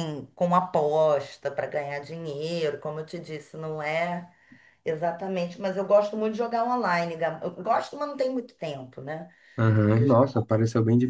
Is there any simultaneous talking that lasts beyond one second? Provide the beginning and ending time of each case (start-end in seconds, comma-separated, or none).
none